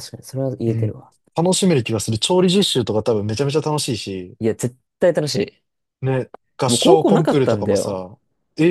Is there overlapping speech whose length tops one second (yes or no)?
yes